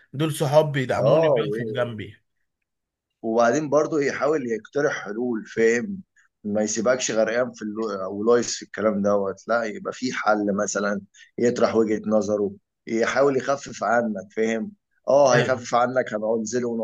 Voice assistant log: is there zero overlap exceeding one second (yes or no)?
yes